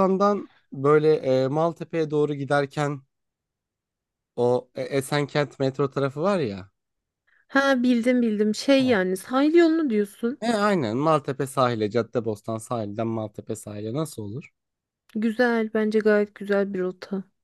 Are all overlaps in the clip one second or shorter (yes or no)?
yes